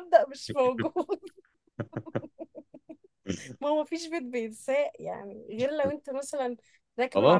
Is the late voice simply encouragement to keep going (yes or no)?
yes